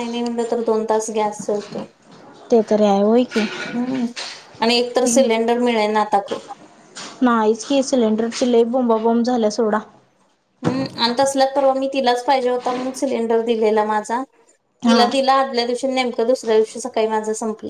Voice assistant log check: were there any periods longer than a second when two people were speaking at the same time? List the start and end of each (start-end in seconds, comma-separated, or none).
none